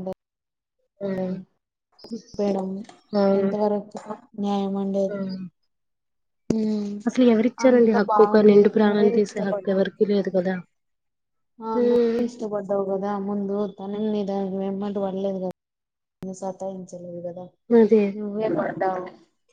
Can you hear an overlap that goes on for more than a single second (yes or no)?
yes